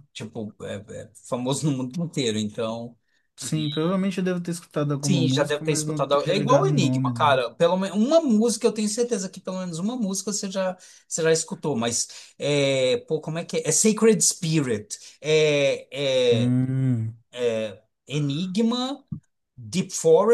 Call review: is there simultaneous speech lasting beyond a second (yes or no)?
yes